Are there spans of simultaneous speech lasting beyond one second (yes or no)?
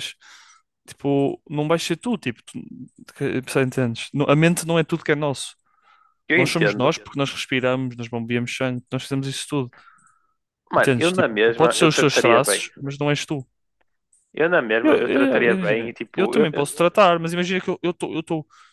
yes